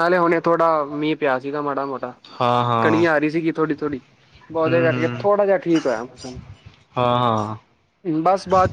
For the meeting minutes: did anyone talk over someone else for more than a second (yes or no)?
no